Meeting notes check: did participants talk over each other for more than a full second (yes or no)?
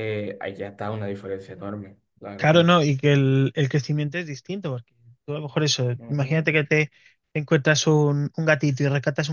no